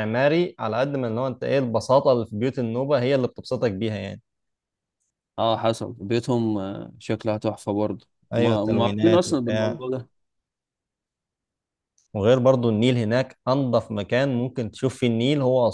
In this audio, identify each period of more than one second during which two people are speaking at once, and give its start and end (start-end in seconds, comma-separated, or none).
8.3-9.8